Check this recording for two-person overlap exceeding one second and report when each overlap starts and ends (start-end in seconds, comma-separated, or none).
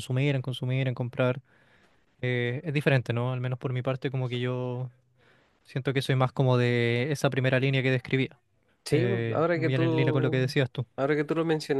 8.9-10.5